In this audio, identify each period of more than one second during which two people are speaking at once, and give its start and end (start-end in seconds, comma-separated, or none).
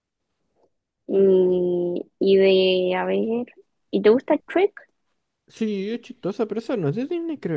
none